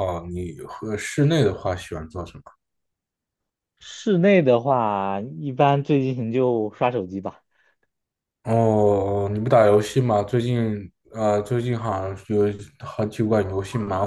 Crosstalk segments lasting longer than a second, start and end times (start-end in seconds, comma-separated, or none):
none